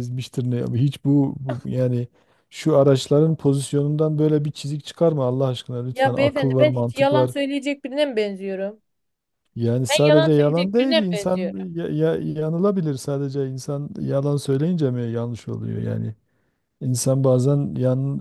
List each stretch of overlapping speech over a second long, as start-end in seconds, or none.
5.9-7.3, 9.9-11.6